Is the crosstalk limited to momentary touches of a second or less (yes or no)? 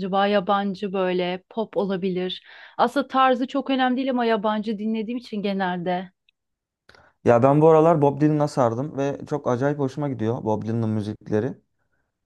yes